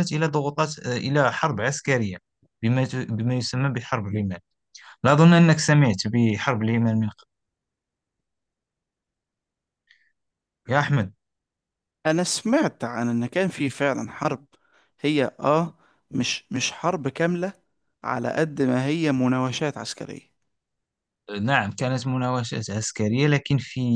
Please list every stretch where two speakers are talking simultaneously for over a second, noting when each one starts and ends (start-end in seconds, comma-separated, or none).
none